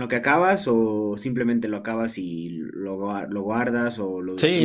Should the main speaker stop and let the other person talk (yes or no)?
yes